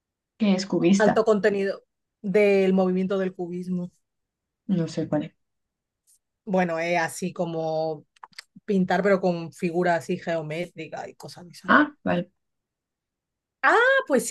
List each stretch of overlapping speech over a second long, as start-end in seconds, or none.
none